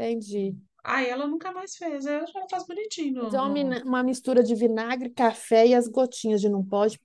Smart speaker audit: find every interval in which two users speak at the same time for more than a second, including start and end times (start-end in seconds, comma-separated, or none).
none